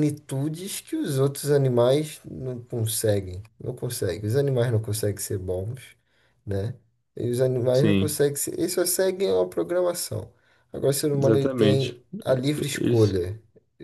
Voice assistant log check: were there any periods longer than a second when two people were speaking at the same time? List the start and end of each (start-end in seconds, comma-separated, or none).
11.2-13.2